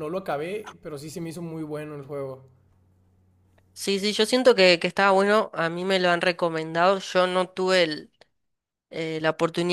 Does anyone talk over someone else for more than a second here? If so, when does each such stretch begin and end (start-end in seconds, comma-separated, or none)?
none